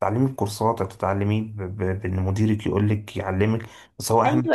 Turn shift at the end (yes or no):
yes